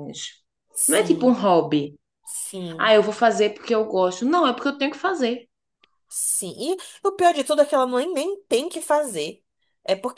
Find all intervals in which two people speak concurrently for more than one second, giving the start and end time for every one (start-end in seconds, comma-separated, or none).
none